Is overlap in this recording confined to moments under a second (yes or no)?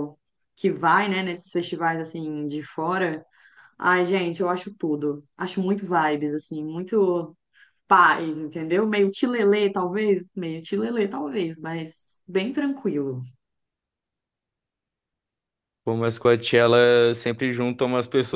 yes